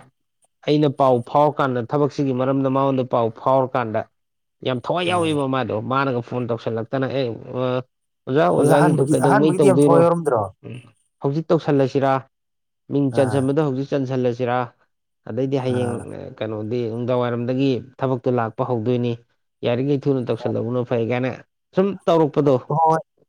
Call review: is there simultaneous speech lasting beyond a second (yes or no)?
yes